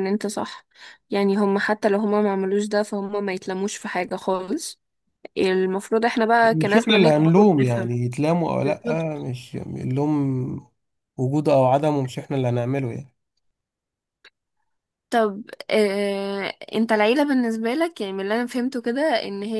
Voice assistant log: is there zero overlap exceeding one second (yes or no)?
no